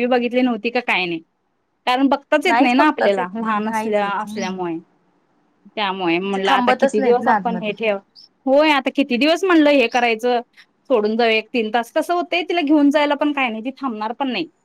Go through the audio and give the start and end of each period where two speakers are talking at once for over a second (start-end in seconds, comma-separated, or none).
2.5-4.6, 6.3-7.7